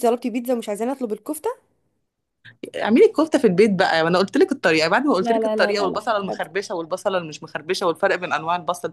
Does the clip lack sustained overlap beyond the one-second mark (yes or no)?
no